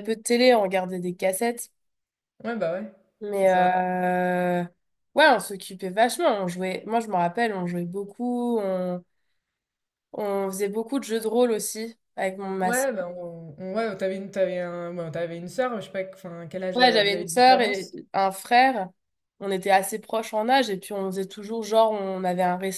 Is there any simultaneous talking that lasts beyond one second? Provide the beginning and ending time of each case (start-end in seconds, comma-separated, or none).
16.7-18.0